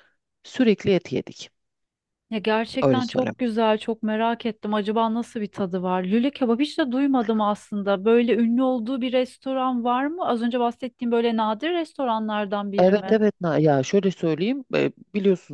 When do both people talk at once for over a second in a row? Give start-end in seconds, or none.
none